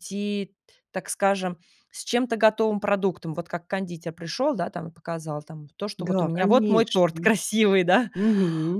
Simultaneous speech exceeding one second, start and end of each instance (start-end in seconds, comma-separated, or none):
6.0-7.3